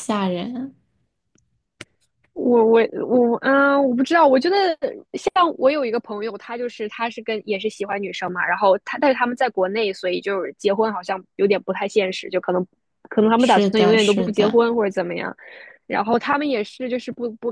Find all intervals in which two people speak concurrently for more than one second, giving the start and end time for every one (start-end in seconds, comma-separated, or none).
13.3-14.6